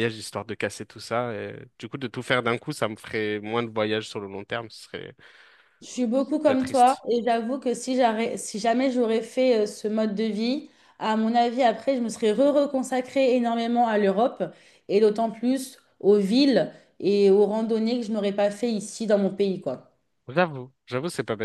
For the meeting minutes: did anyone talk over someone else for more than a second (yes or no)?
no